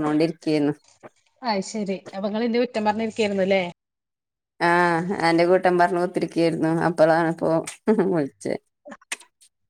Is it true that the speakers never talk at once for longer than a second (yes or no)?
yes